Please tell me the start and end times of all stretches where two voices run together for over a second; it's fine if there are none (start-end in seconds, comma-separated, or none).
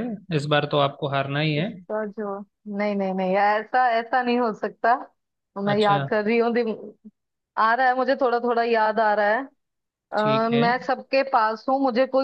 none